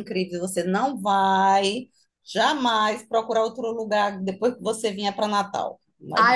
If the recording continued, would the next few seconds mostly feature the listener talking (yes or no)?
yes